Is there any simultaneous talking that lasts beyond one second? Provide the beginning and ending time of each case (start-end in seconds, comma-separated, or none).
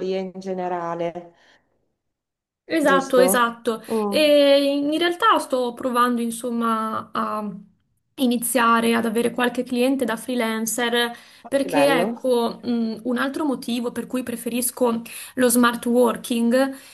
none